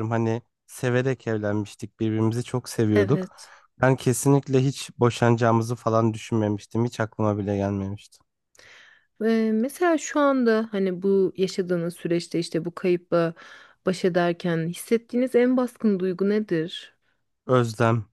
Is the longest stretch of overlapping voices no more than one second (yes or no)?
yes